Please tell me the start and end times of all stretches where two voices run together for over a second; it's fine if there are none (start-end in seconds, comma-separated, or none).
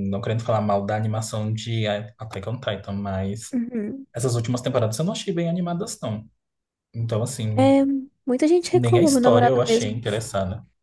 8.7-10.0